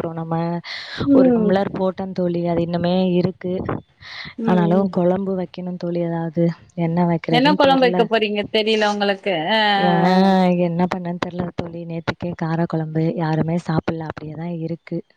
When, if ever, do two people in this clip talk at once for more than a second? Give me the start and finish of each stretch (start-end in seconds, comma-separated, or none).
none